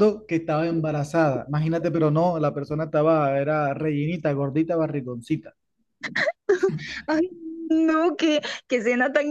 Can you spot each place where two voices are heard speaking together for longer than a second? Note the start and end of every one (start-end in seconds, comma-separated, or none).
none